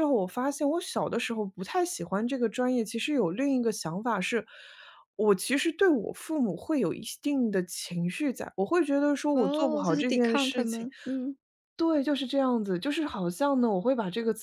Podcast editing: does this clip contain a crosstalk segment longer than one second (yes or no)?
yes